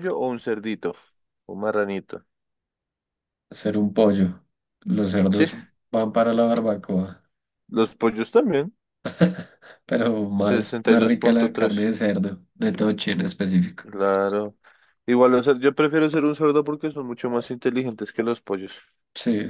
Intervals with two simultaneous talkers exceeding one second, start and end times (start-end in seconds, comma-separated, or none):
10.4-11.8